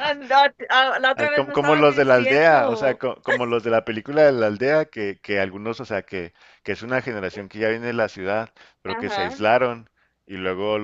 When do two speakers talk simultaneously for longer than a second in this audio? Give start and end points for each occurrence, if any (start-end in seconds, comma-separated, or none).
1.1-3.0